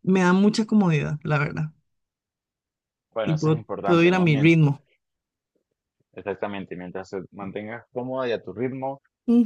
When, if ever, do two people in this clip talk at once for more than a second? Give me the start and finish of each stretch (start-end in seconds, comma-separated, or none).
3.2-4.5